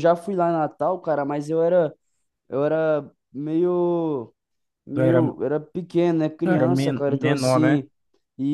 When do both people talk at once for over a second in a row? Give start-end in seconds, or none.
6.4-7.9